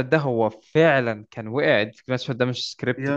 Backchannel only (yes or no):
yes